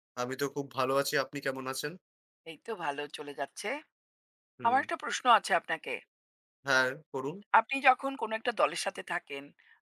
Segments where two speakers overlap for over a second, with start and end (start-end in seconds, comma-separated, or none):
none